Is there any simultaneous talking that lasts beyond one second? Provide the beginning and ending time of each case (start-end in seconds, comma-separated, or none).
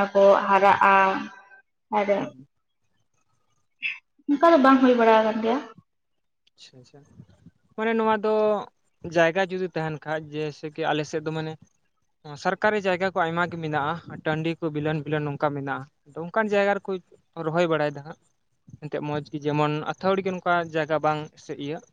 none